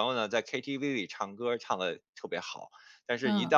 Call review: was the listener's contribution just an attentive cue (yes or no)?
yes